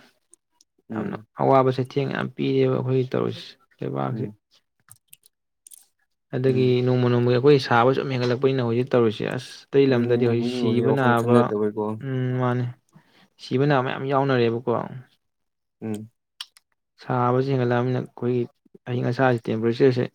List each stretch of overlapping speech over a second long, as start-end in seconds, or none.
9.9-11.4